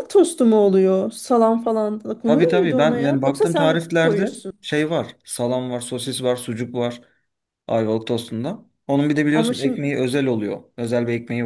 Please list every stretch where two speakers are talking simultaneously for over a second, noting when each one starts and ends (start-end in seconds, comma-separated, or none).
2.2-4.6